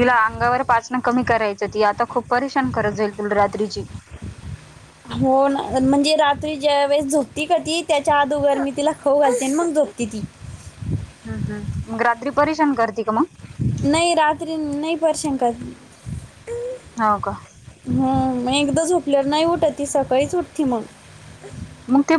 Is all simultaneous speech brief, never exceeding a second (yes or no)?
yes